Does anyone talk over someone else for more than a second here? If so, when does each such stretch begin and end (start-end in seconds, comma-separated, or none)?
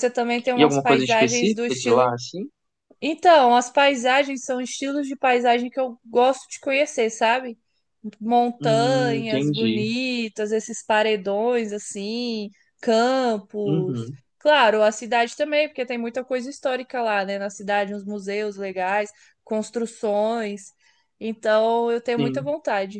0.5-2.1, 8.6-9.9